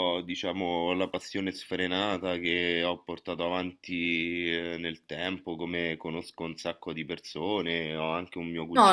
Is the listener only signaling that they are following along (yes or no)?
yes